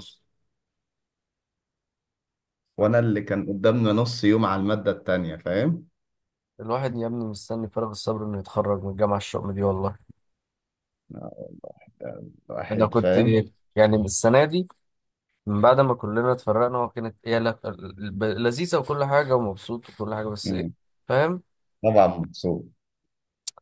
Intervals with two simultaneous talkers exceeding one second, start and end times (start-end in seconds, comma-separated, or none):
none